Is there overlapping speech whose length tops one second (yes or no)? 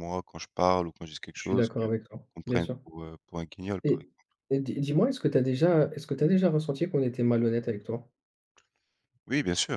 yes